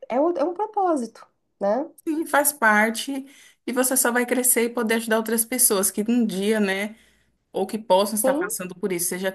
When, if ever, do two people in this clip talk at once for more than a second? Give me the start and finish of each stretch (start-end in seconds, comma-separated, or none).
none